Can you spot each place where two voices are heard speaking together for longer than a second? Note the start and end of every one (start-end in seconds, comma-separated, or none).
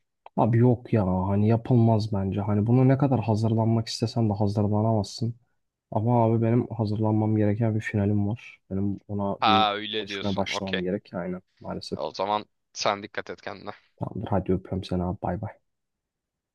9.4-10.8